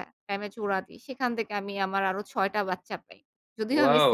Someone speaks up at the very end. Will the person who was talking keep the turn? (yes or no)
no